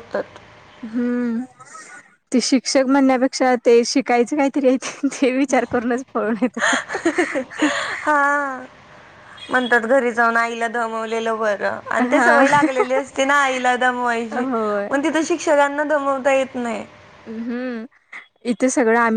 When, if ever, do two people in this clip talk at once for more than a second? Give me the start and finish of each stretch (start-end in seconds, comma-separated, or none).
none